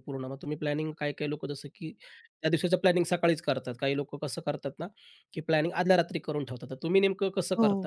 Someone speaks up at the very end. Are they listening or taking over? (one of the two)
taking over